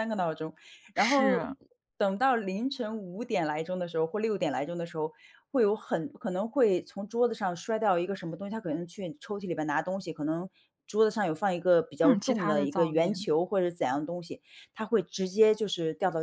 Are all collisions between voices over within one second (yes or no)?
no